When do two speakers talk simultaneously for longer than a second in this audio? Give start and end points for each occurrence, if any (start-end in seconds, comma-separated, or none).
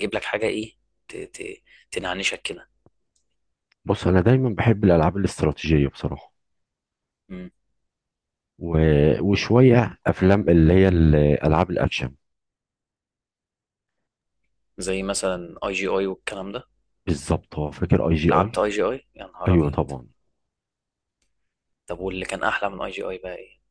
none